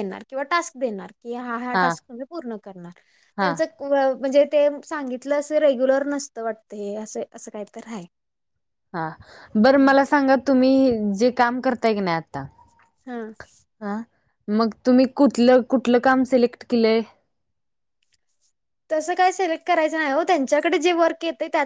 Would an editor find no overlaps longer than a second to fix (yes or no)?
yes